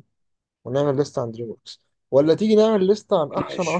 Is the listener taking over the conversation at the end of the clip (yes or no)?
no